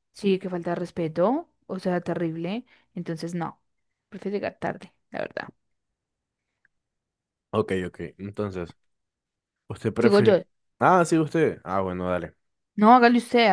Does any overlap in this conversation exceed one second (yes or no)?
no